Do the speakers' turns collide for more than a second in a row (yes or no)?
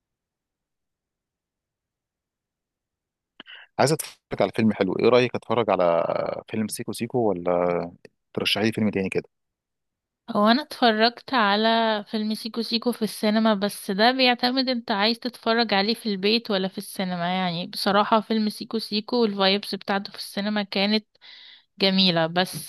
no